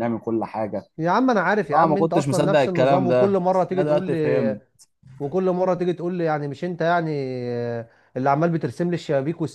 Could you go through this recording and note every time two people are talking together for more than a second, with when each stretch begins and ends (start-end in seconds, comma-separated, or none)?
1.7-4.6